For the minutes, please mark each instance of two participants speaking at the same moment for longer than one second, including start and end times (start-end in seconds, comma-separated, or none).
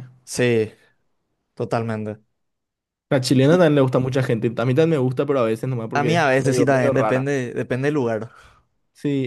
5.9-7.3